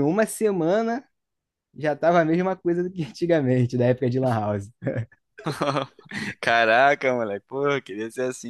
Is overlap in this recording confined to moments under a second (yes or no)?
yes